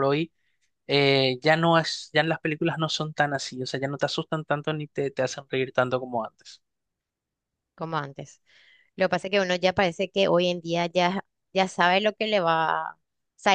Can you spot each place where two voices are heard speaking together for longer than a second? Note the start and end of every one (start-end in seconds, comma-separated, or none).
none